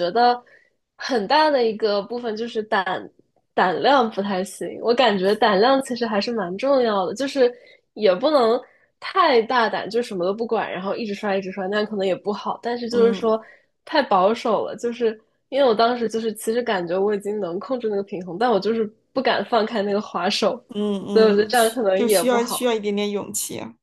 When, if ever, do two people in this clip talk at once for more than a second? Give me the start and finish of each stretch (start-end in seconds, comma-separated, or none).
21.1-22.7